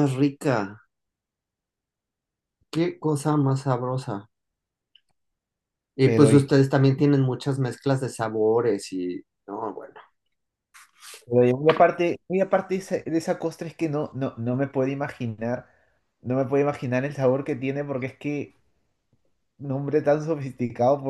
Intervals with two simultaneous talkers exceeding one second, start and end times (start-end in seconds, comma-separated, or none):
none